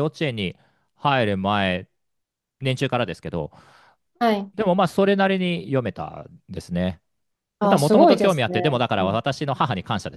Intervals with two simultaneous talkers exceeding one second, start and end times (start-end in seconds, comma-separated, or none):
7.6-9.2